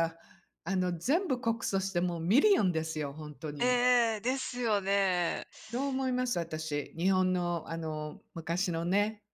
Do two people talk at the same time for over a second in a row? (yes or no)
no